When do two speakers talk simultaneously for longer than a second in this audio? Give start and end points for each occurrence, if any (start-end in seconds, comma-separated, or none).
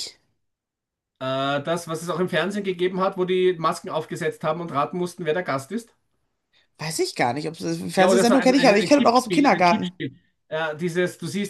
8.0-9.9